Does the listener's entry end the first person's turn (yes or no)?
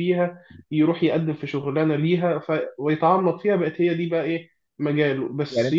no